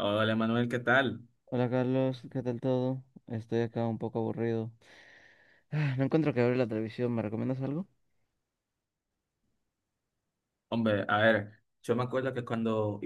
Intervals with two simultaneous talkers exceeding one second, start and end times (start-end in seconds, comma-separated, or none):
none